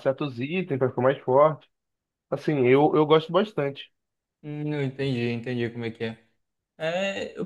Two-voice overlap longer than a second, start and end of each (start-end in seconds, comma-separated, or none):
none